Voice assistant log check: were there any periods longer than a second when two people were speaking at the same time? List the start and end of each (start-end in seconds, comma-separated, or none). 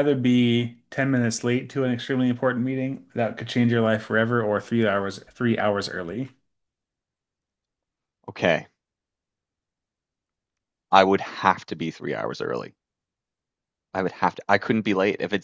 none